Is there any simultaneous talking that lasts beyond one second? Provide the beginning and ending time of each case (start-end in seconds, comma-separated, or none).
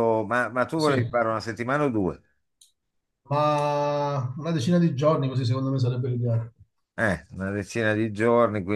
none